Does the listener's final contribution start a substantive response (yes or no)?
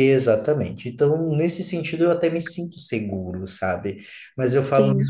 no